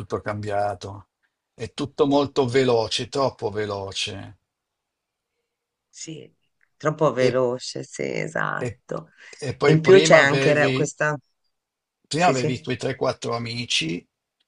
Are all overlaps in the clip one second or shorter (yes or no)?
no